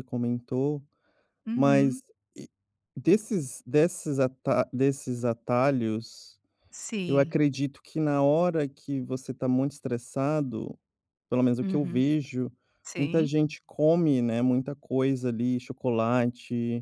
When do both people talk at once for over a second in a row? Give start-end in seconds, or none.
none